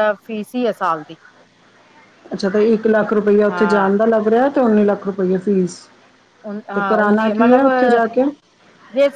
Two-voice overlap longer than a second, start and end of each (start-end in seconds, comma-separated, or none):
6.7-8.0